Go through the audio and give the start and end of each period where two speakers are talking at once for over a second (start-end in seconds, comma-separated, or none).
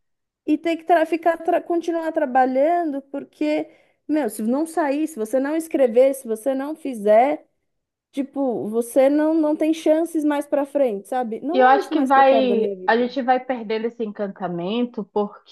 11.5-13.1